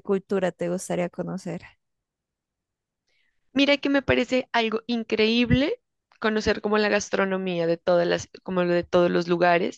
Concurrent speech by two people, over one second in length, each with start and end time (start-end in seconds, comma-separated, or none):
none